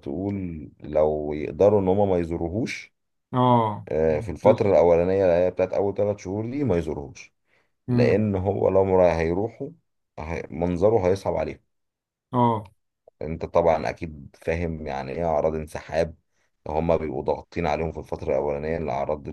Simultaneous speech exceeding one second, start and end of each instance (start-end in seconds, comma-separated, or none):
none